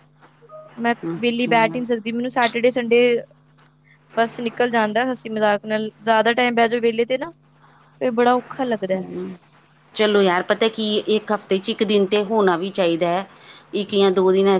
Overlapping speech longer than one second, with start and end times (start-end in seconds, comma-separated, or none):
none